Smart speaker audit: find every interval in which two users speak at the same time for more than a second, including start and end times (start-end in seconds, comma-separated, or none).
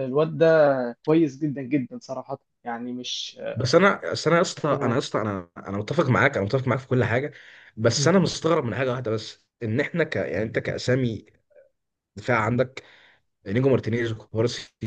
none